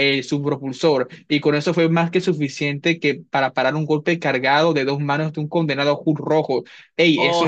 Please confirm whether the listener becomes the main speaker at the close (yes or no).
yes